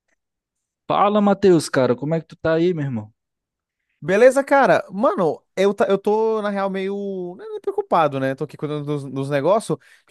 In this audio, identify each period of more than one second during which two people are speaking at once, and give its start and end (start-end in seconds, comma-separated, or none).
none